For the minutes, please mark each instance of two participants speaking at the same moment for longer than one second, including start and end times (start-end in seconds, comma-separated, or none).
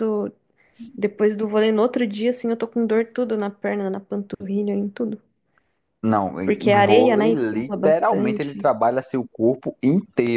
6.4-8.7